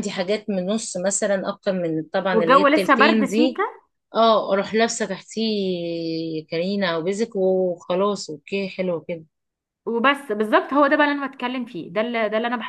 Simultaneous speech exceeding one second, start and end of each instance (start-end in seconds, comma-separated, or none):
2.3-3.6